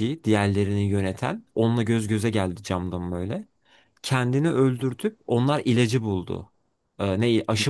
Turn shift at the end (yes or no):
no